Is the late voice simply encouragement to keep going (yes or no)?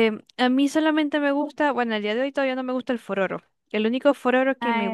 yes